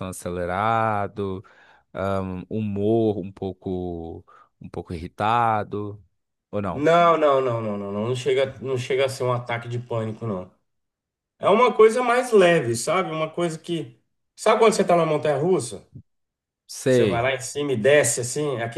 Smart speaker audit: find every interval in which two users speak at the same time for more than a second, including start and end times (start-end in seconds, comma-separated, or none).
none